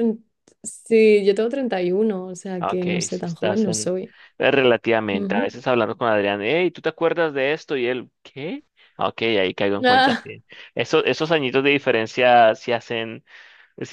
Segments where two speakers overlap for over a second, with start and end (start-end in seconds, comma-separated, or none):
2.6-3.9